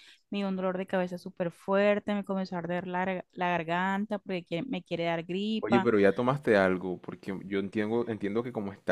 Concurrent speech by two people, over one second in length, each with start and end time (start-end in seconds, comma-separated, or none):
none